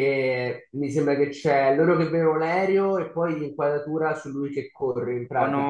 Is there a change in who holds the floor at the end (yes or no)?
yes